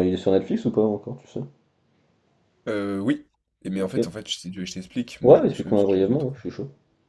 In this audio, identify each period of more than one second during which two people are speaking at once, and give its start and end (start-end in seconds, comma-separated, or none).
5.2-6.4